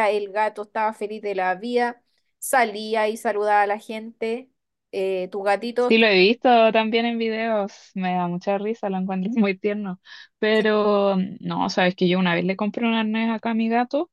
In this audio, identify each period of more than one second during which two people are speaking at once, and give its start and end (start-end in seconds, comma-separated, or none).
none